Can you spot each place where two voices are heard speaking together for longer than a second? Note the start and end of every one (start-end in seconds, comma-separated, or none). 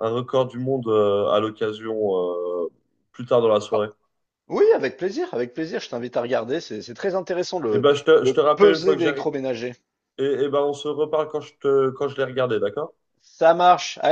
7.7-9.3